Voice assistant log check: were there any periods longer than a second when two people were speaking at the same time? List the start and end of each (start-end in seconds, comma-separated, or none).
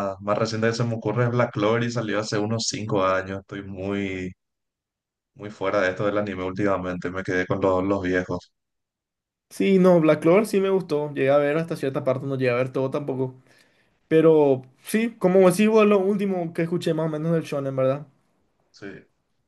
none